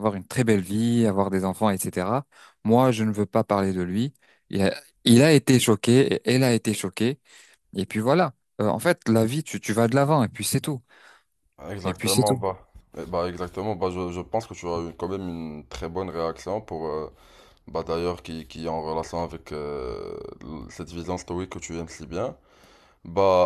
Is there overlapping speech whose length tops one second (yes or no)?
no